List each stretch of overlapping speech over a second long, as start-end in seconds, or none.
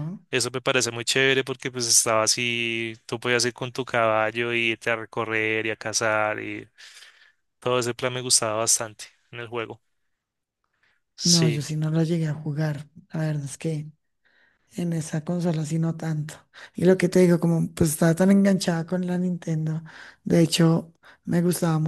none